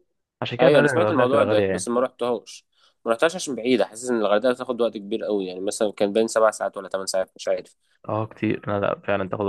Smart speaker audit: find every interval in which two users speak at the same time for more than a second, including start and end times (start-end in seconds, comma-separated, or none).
0.6-1.9